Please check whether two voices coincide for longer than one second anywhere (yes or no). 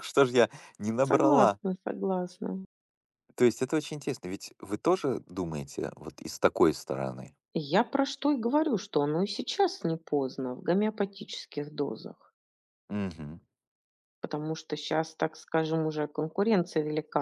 no